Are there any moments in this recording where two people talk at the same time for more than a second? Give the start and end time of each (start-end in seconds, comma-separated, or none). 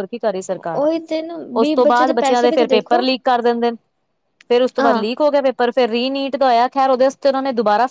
1.6-3.0